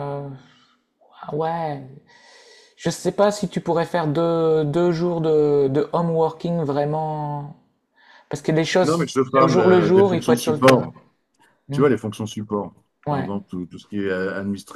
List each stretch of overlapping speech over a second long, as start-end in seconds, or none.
8.8-10.9